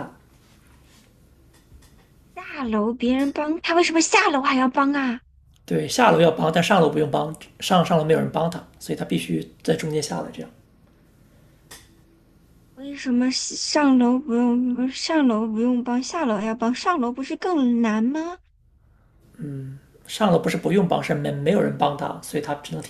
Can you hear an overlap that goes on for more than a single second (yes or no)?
no